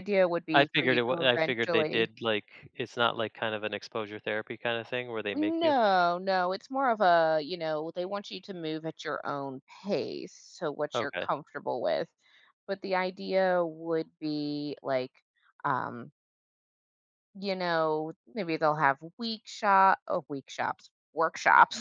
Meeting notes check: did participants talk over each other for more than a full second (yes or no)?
yes